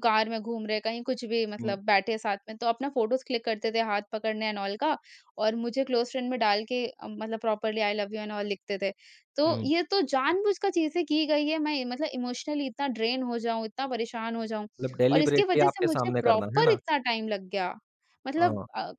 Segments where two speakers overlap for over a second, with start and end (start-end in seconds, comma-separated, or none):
15.1-16.8